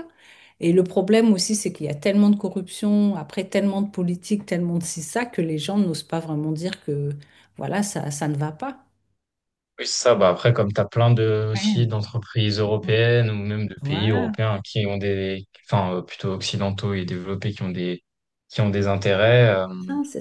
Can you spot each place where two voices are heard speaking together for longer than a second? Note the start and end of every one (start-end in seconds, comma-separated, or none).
none